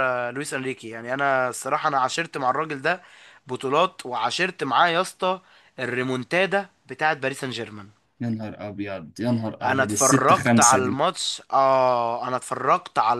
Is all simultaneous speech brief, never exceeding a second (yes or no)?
no